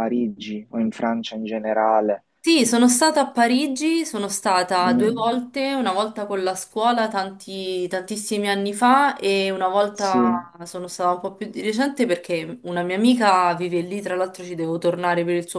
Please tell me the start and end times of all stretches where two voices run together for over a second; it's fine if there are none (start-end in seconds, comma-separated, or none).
none